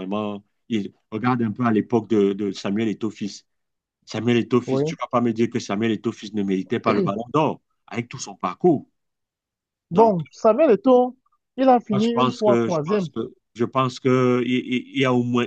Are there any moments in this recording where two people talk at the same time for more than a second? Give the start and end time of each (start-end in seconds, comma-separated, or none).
11.9-13.1